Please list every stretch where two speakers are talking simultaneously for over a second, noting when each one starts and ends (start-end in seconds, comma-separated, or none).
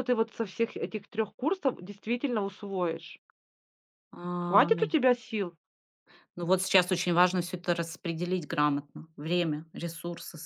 none